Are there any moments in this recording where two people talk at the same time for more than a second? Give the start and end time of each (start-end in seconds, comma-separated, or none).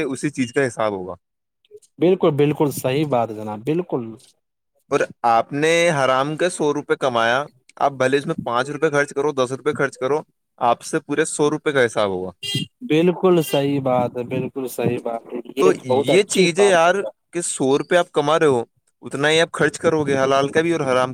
none